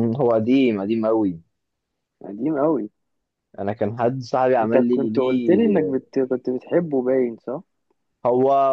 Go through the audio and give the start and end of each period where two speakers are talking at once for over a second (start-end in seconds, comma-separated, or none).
4.6-5.9